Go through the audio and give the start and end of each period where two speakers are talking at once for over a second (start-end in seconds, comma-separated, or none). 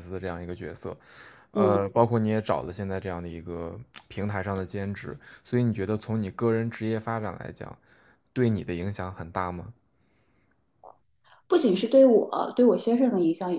none